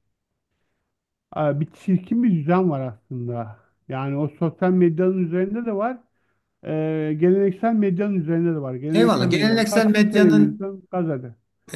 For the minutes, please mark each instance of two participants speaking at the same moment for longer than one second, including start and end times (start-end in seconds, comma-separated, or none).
8.9-10.7